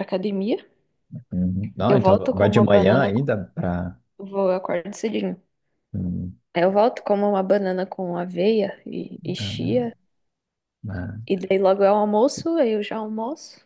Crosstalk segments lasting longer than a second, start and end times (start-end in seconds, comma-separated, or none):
1.9-3.3